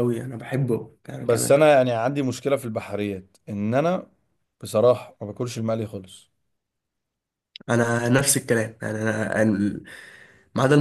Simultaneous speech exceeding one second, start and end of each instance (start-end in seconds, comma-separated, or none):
none